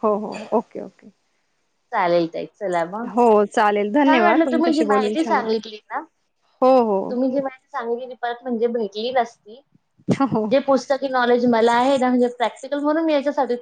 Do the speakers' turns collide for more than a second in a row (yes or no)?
yes